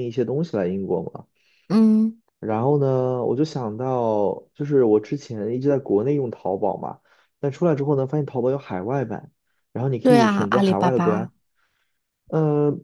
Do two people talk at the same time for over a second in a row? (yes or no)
yes